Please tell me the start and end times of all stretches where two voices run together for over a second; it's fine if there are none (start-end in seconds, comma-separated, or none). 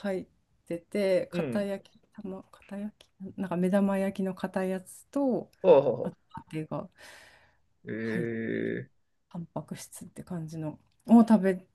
none